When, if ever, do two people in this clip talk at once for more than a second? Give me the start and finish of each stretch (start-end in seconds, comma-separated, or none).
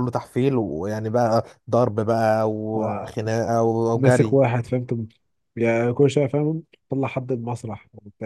none